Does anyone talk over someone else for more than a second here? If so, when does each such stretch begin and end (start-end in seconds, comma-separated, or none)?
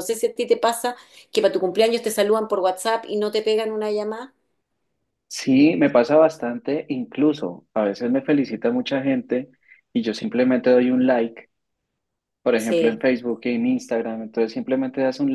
none